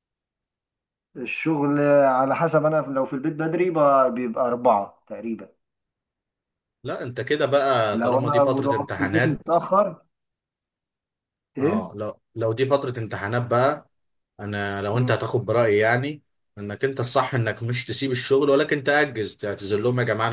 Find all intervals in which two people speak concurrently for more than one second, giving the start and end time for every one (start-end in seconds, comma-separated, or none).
7.9-9.5